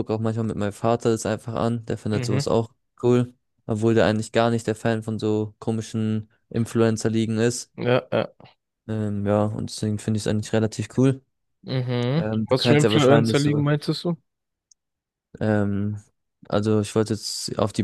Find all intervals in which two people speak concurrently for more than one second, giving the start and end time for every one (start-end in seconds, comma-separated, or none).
12.2-13.6